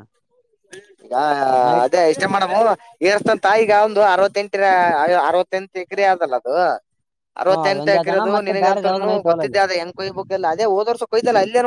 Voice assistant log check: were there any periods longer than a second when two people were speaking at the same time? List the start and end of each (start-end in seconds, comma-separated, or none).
7.5-9.6